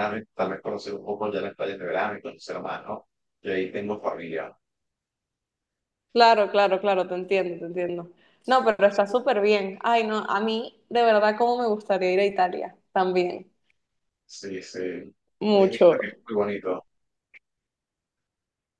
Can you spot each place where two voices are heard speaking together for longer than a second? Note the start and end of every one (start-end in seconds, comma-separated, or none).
none